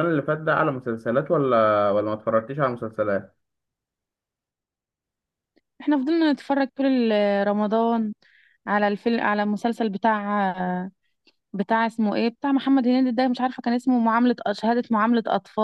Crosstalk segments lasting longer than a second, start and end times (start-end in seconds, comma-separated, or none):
none